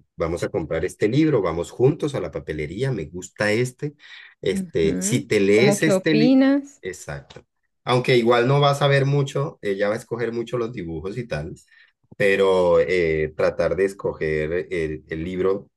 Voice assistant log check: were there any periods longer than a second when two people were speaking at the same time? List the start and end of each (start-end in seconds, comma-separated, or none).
4.5-6.4